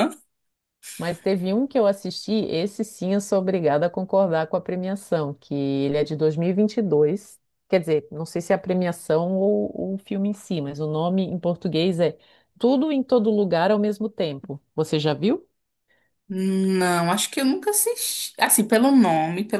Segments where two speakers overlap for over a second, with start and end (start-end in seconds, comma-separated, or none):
none